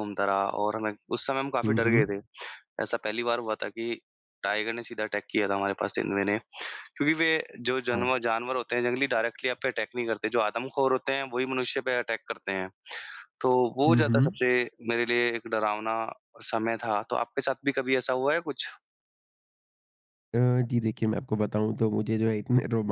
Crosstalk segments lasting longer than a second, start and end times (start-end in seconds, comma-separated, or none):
none